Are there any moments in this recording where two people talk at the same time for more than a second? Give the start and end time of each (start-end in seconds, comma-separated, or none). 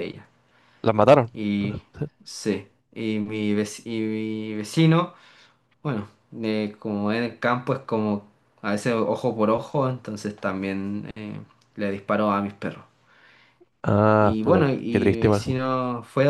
14.2-15.6